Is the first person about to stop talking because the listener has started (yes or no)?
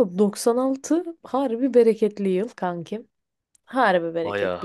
no